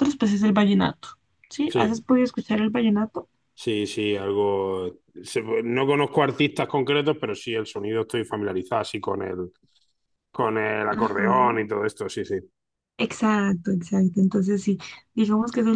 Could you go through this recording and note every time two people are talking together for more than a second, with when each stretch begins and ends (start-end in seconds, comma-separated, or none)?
none